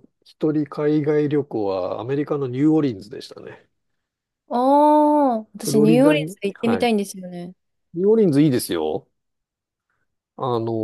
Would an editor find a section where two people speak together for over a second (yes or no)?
yes